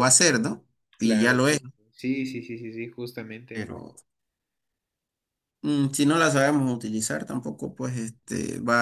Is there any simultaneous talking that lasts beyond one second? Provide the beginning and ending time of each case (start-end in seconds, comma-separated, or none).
none